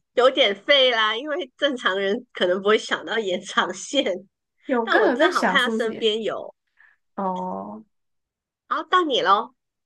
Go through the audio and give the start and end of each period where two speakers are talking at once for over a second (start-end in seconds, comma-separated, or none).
4.8-6.1